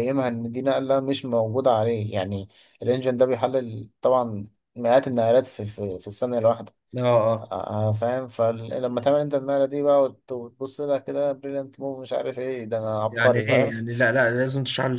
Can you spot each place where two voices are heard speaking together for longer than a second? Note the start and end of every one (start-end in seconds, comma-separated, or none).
none